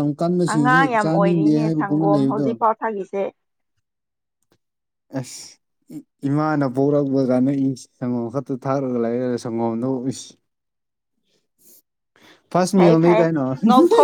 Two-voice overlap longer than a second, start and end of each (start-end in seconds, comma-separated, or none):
0.5-2.5